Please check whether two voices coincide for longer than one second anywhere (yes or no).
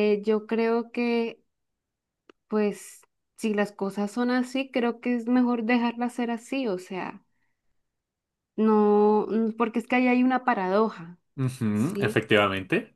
no